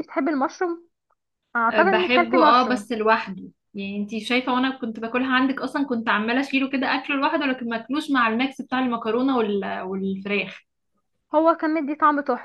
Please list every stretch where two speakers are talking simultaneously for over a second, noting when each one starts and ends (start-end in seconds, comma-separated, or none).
1.7-2.9